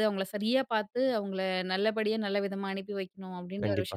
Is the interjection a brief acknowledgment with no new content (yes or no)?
no